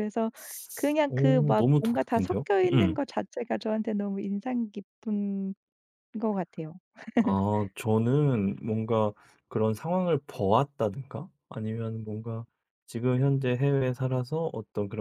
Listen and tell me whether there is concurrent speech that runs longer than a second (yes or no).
yes